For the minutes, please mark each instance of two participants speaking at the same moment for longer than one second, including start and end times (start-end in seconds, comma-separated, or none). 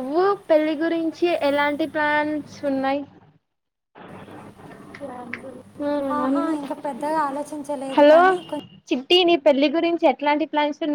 none